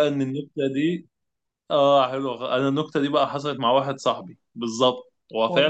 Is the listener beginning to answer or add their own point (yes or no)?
no